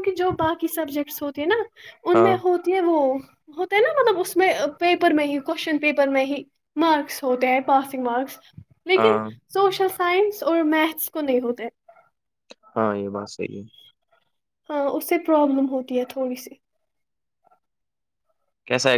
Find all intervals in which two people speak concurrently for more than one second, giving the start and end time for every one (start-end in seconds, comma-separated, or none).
none